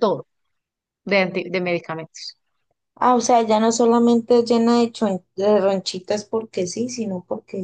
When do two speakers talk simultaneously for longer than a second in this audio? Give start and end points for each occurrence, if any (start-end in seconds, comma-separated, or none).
none